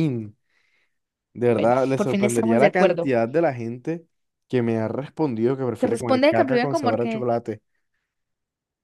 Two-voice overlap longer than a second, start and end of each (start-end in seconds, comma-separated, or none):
1.5-3.1, 5.8-7.1